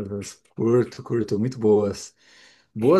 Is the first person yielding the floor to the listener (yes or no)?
no